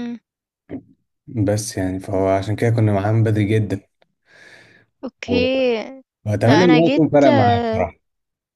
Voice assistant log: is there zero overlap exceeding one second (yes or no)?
no